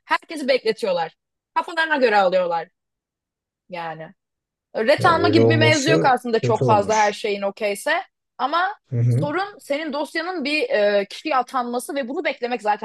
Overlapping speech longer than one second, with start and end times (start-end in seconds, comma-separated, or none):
5.0-7.2